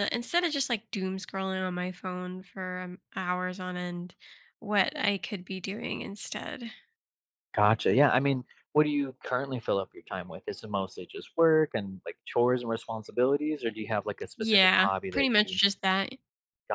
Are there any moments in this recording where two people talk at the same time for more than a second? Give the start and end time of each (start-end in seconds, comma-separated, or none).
14.4-15.6